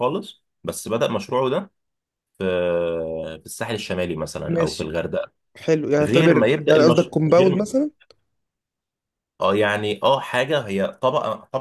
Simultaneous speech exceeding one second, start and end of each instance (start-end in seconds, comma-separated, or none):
6.0-7.6